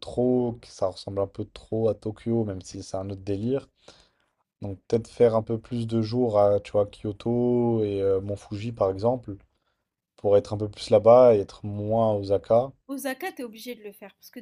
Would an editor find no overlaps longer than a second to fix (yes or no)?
yes